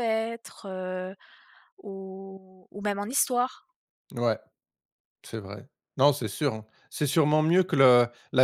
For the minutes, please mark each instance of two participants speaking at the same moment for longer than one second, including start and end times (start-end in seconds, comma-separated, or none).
none